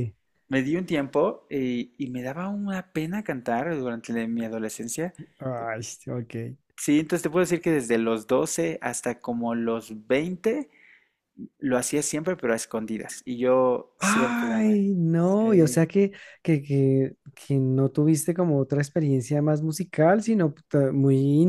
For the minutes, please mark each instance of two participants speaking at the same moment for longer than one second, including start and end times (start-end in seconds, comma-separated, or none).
14.0-15.9